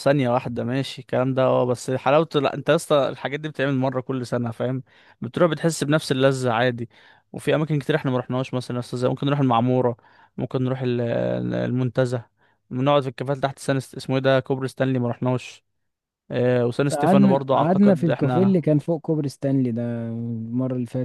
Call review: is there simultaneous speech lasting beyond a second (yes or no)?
yes